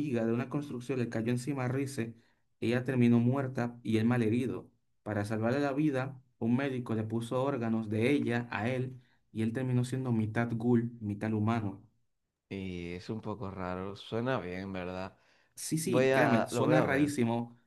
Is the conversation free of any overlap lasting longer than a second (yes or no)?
no